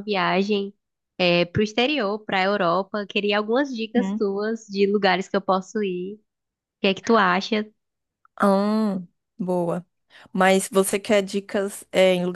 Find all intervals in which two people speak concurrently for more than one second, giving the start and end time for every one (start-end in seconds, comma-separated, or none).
none